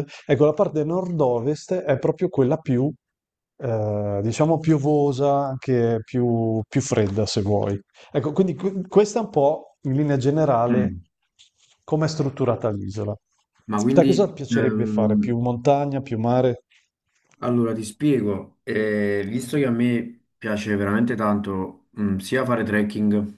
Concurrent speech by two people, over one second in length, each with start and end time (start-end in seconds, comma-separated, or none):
13.9-15.3